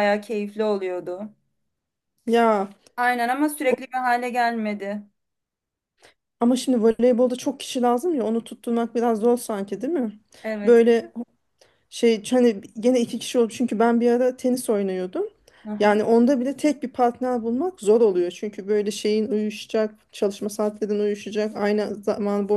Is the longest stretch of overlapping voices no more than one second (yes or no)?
yes